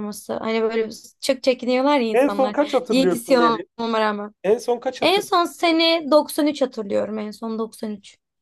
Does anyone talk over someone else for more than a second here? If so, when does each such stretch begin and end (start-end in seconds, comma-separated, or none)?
2.1-3.4